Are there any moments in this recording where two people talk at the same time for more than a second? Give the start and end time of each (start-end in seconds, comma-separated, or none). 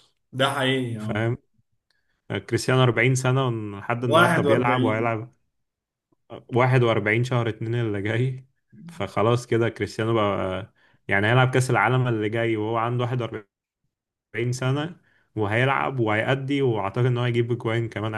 4.0-5.2